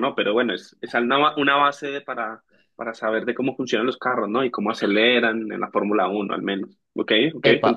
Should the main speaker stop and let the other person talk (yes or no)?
yes